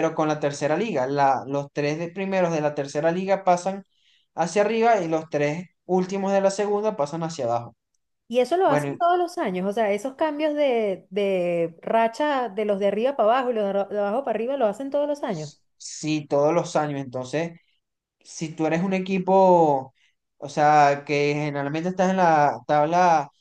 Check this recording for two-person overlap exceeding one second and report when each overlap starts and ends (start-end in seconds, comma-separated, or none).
none